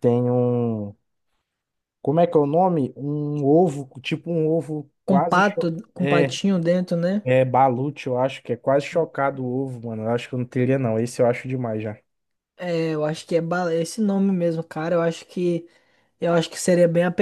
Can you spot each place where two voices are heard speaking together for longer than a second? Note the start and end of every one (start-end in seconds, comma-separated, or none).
5.1-6.4